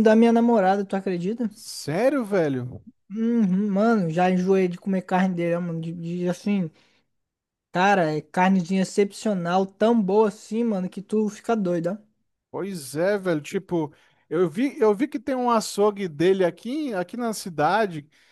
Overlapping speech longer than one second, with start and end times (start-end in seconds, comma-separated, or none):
none